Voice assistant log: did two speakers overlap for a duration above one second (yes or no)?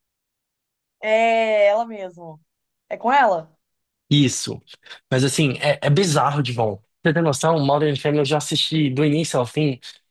no